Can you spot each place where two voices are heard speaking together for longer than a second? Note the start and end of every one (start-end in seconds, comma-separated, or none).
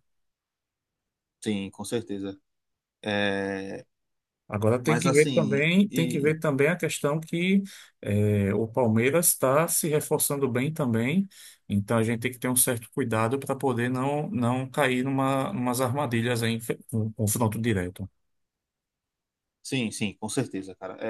4.8-6.4